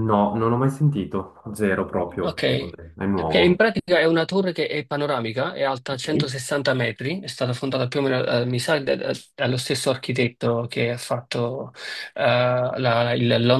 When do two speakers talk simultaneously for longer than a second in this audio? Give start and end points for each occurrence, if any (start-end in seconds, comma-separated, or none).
none